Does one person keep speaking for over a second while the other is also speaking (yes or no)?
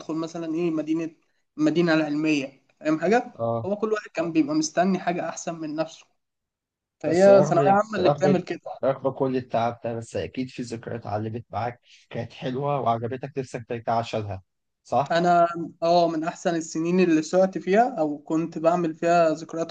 yes